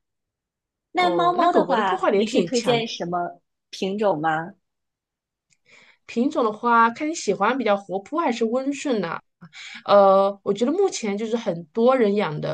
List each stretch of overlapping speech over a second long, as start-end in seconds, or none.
0.9-2.9